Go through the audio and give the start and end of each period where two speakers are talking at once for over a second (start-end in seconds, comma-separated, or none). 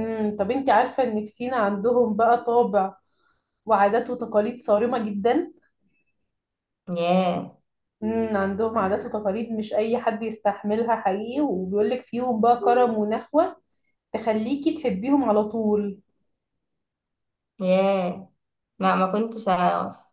none